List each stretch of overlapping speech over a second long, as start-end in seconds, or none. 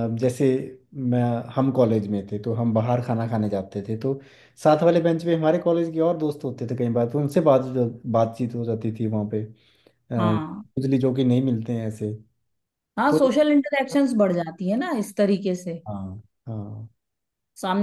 none